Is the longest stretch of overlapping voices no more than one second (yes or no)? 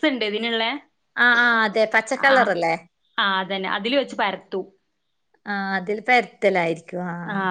yes